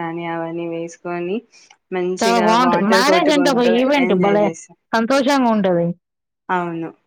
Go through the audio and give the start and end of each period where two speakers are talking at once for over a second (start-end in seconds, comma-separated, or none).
2.2-4.4